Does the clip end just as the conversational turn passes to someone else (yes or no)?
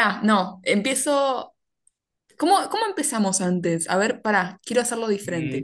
yes